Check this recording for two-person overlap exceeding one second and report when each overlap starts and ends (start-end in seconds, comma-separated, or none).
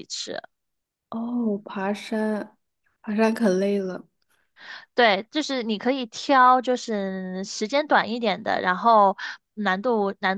none